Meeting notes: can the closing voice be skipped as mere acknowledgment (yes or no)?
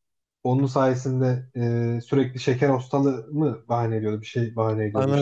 no